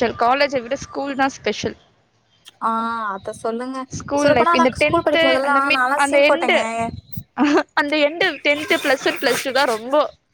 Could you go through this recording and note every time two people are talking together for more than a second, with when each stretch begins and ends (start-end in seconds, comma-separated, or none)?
4.2-6.6